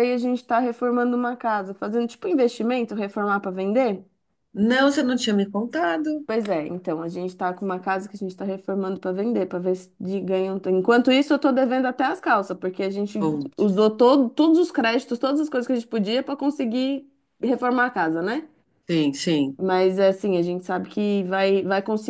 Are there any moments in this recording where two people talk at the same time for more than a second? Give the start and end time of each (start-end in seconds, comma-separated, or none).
none